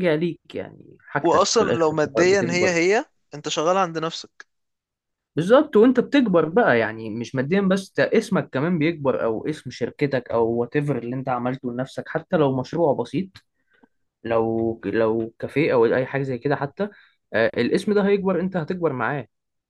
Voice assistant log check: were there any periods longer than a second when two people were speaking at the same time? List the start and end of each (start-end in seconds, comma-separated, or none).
1.2-2.8